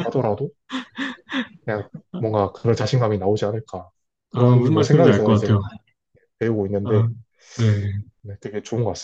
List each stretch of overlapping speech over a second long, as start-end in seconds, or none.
4.3-5.6